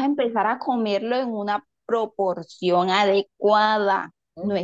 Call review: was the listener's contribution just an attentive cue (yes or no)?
yes